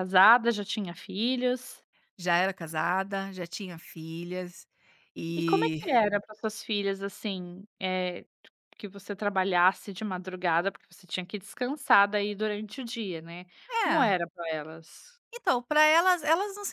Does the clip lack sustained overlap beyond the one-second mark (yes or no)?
yes